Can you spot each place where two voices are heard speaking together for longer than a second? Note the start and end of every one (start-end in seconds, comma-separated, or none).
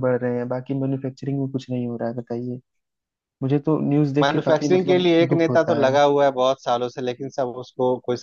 4.2-6.0